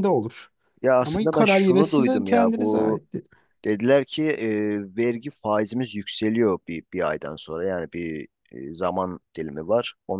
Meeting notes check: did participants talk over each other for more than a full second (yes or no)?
yes